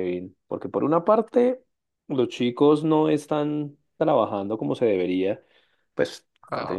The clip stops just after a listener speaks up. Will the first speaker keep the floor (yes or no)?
yes